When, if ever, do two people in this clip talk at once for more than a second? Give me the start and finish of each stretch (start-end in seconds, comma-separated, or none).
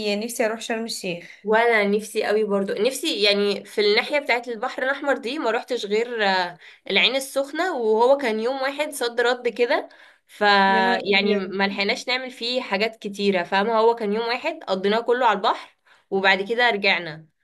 none